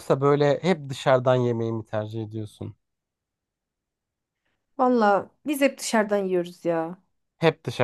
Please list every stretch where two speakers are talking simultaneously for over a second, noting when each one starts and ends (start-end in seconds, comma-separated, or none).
none